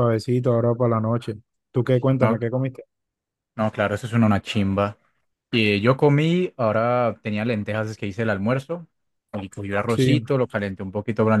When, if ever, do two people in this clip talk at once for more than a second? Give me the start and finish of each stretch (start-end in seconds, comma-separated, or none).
none